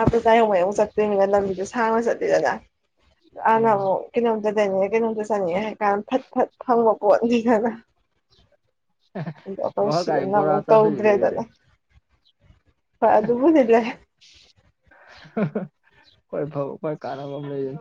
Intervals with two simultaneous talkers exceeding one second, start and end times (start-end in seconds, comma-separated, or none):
9.8-11.4